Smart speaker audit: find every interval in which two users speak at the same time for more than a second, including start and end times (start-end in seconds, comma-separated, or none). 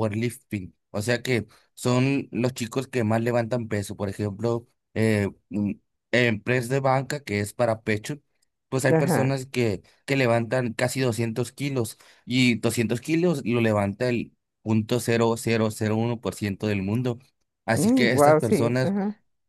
17.7-18.9